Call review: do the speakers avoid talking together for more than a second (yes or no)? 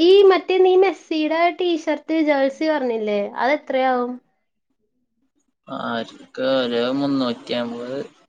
yes